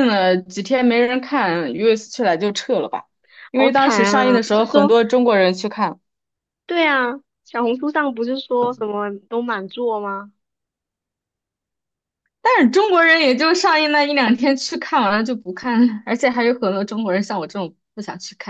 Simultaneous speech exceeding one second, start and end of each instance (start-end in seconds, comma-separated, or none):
3.5-4.9